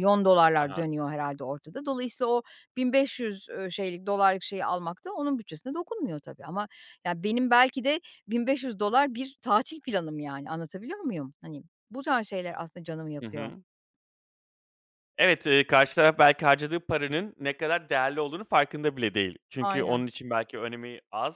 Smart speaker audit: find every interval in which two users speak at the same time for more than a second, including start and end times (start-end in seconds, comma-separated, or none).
none